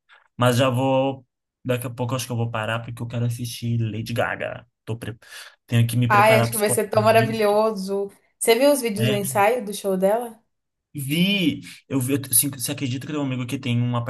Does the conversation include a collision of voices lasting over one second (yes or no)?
yes